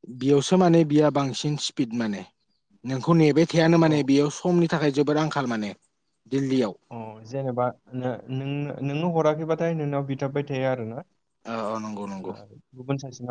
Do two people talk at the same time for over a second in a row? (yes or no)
no